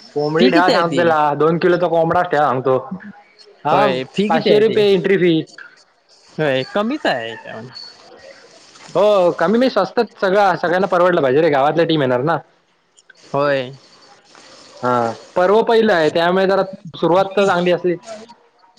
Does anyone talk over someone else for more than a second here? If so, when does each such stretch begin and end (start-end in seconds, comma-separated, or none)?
none